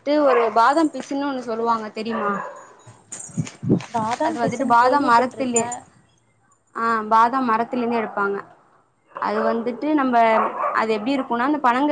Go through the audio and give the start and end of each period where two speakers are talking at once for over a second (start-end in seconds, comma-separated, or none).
4.3-5.6